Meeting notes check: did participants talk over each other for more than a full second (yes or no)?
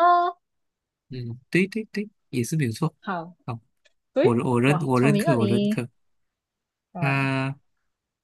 yes